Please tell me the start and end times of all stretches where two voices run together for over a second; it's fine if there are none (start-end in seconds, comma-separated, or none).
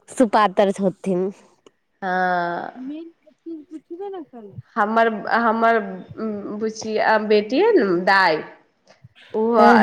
none